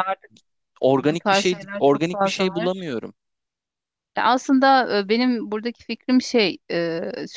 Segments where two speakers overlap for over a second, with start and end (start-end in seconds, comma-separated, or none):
1.0-2.9